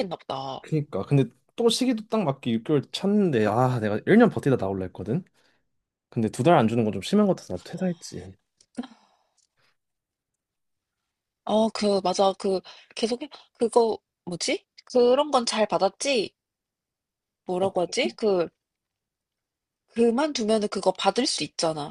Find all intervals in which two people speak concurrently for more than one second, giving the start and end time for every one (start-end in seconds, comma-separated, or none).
none